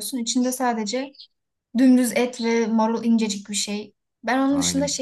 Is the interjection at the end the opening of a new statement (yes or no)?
no